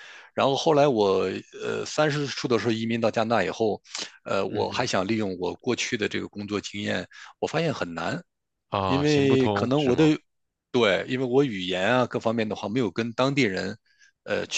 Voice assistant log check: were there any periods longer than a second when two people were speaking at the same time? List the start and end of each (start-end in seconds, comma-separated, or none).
8.8-10.1